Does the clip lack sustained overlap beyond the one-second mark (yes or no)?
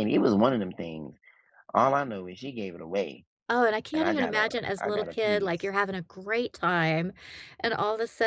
no